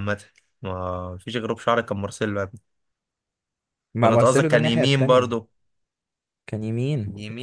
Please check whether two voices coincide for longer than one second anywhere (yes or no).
yes